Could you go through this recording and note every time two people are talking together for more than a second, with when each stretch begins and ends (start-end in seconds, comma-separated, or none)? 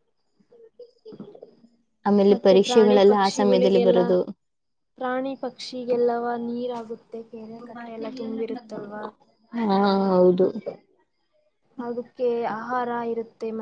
2.3-4.0